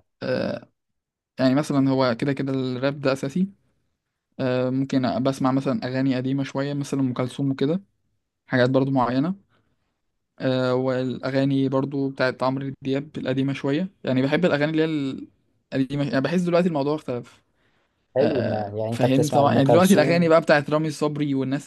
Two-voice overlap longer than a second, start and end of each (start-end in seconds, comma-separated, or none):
18.2-20.4